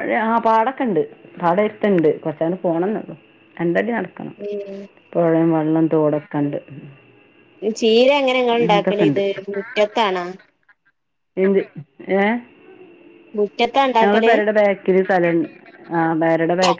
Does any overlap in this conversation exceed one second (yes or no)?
no